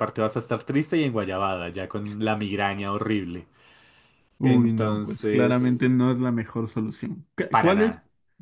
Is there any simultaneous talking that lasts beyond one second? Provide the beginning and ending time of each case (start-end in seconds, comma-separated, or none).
4.4-5.8